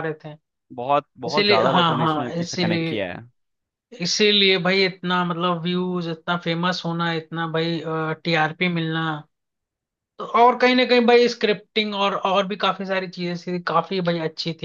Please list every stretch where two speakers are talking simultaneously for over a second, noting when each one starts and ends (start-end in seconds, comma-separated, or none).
1.3-2.9